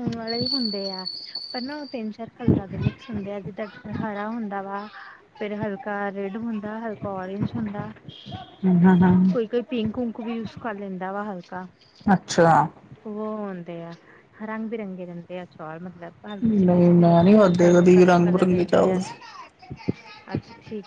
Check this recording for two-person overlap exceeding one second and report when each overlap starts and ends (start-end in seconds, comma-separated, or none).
16.4-19.0